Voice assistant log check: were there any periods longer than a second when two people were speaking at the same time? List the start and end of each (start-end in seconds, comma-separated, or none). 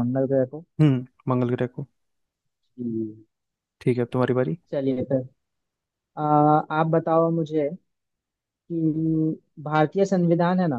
none